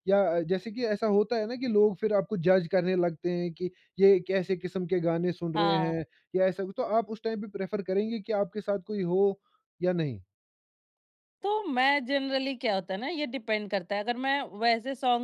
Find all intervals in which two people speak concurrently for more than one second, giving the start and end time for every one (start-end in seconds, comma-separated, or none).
none